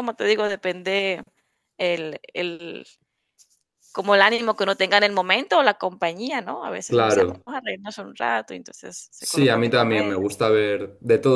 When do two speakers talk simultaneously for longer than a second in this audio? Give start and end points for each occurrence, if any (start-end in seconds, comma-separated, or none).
9.2-10.4